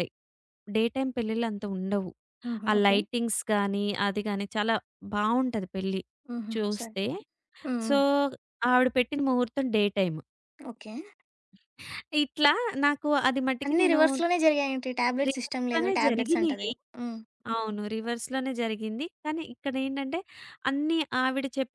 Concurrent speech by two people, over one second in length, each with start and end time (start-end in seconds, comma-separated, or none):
15.3-16.7